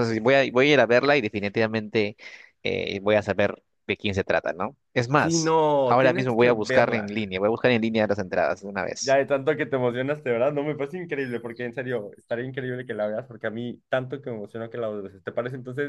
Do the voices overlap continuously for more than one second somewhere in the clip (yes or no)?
yes